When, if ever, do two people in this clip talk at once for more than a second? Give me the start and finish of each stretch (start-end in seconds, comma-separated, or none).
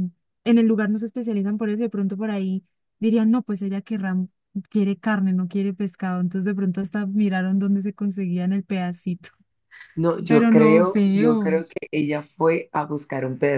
10.3-11.6